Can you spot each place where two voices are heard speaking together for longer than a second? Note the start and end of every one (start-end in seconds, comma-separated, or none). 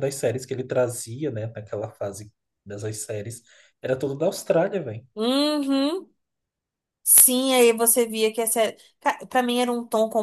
none